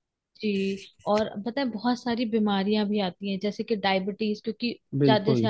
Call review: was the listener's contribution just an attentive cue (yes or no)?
yes